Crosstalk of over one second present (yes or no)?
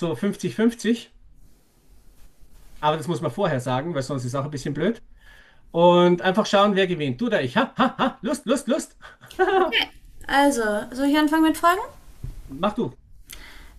no